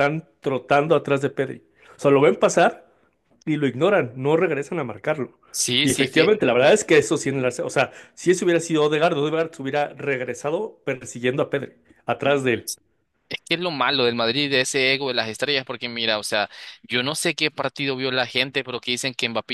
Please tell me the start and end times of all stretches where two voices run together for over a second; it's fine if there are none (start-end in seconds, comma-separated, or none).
none